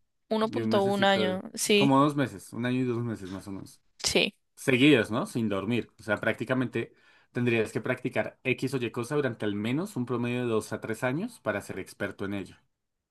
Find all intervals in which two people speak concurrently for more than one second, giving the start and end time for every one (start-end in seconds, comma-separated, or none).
0.5-2.0